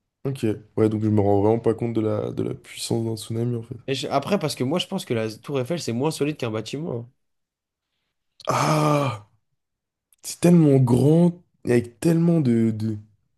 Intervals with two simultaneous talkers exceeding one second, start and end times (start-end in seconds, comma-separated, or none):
none